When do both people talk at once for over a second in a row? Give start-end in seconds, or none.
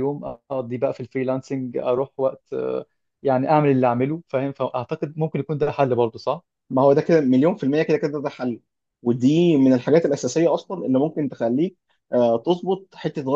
none